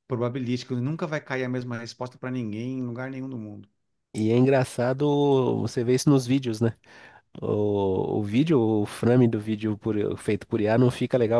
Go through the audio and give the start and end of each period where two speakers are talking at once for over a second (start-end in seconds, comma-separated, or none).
none